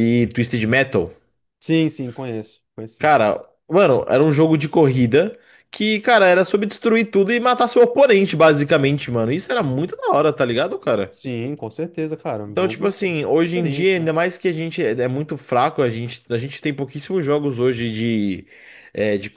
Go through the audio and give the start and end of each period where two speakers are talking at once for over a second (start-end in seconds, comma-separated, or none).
12.4-14.1